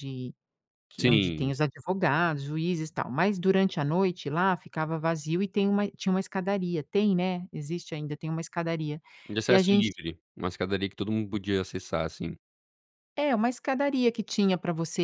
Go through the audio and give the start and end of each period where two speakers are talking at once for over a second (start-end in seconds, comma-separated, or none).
none